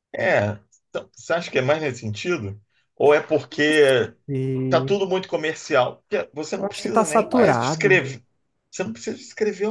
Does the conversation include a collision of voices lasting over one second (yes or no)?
yes